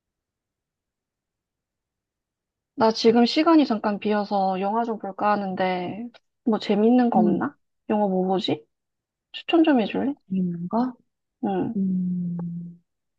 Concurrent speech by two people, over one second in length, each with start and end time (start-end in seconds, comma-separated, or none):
none